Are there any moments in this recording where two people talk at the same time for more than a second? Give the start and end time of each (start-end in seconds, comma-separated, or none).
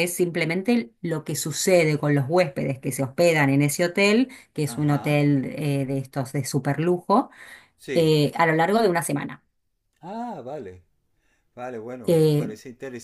none